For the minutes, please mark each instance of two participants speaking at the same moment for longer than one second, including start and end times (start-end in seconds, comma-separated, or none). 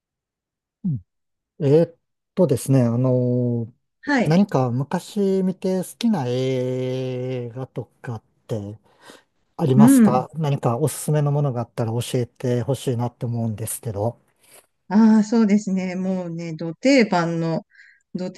none